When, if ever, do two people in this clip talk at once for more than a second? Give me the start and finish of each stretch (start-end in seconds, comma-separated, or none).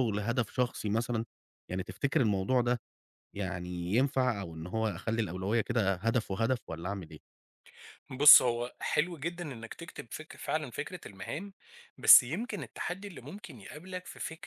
none